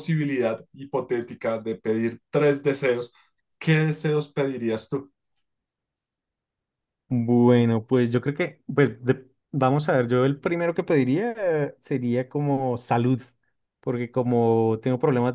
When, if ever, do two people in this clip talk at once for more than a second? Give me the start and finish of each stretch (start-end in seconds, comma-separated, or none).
none